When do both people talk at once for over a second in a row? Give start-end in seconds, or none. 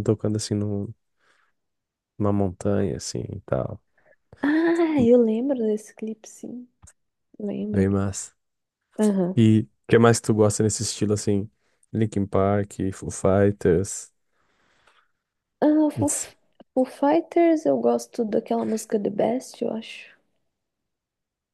none